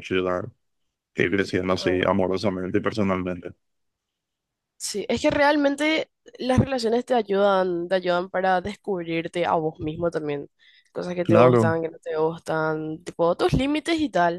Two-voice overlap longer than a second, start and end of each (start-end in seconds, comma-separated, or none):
none